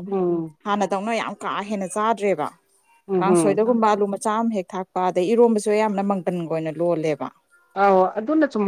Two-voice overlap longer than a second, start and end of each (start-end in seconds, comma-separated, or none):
none